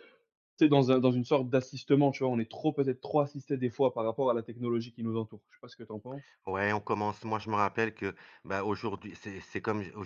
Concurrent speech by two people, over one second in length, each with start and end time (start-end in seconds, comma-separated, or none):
none